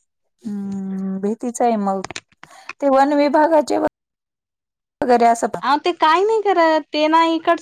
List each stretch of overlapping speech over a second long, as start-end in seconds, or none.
none